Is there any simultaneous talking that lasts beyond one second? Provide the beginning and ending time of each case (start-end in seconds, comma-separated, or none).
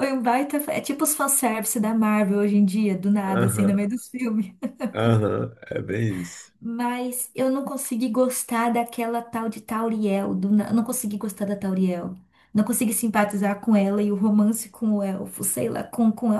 none